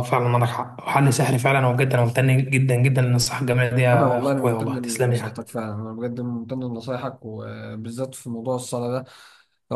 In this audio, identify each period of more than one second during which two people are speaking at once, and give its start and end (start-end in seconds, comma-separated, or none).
3.9-5.5